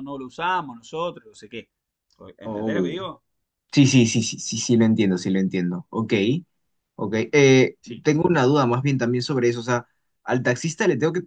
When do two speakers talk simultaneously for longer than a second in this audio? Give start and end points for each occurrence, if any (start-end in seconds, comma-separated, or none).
none